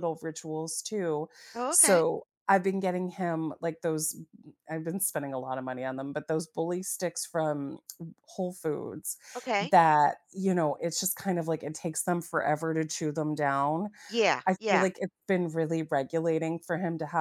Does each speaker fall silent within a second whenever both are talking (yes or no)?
yes